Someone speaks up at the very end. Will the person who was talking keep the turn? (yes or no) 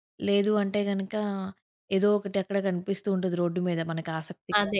no